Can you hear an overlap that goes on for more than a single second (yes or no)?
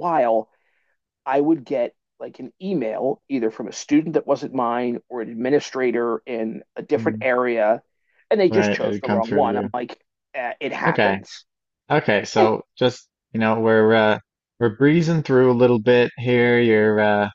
yes